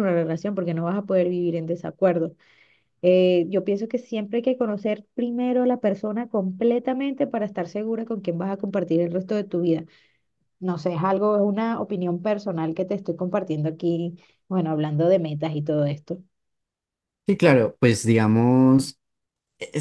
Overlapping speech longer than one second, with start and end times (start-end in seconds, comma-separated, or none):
none